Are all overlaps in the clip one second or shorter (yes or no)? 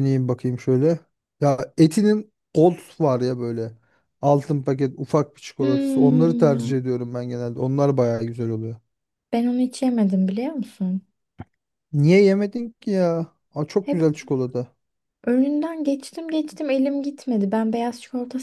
no